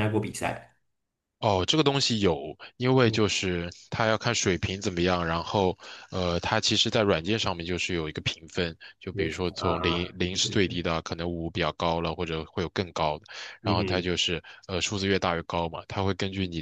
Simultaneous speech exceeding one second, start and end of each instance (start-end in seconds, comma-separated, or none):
9.1-10.7